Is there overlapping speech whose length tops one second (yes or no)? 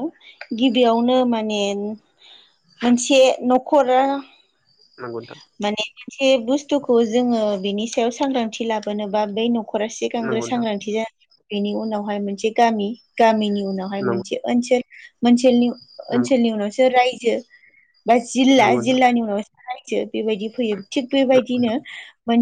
no